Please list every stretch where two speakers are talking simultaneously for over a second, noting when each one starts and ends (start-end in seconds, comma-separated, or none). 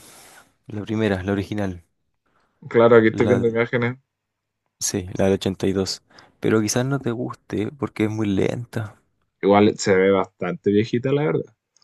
none